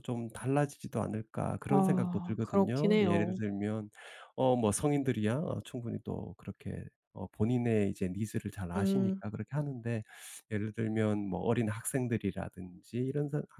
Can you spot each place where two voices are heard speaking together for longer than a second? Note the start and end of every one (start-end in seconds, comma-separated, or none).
1.7-3.4